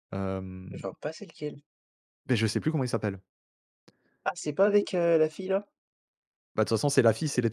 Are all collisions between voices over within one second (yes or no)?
yes